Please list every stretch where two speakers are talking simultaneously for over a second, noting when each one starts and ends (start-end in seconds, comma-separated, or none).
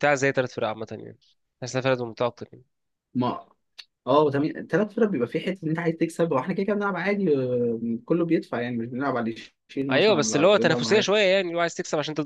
9.9-11.1